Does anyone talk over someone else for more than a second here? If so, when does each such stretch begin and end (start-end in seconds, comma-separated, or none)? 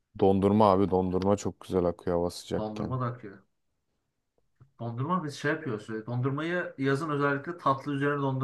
none